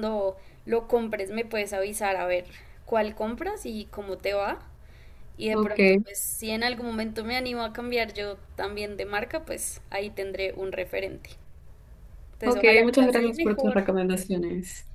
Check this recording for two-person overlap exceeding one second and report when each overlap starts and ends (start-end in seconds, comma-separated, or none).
12.4-13.8